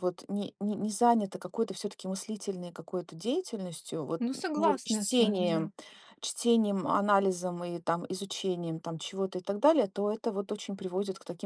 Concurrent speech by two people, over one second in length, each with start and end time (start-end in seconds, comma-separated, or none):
4.2-5.7